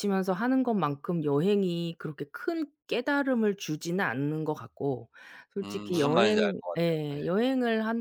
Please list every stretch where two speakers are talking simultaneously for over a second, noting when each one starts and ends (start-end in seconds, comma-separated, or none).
5.6-7.3